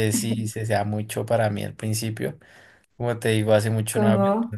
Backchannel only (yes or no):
yes